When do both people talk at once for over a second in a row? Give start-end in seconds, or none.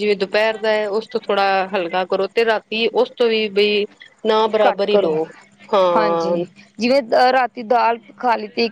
none